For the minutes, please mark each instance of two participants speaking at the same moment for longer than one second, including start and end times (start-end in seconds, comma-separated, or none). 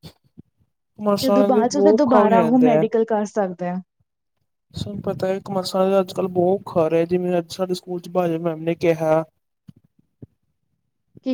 1.2-2.8